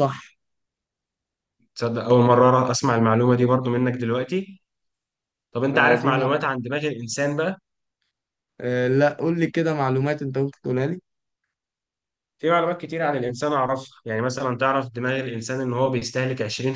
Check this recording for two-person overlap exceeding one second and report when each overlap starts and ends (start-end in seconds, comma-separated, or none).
none